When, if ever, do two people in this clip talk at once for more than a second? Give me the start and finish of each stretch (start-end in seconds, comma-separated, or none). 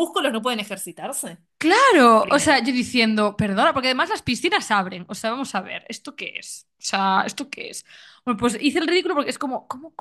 none